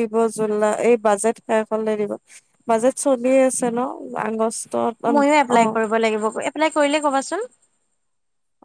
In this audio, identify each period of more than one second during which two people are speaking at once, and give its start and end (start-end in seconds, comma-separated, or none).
none